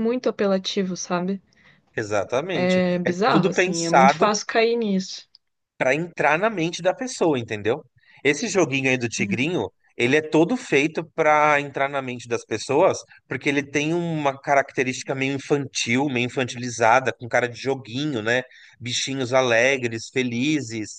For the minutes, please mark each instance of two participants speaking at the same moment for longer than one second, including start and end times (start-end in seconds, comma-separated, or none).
2.6-4.3